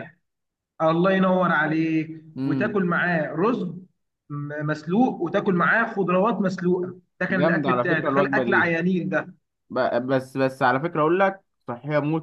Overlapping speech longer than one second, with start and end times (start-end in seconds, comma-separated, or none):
7.3-8.7